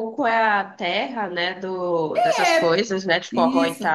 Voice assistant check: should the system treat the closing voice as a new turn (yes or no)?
yes